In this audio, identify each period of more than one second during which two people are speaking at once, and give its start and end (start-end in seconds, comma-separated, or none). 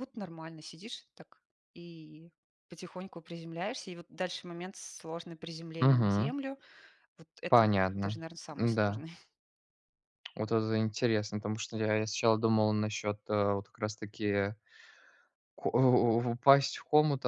7.5-9.0